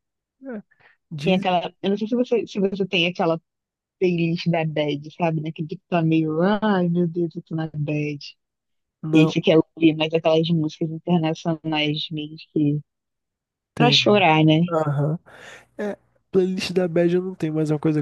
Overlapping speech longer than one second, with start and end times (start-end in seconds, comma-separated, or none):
none